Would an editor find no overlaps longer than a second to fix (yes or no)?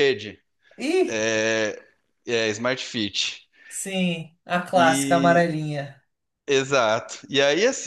yes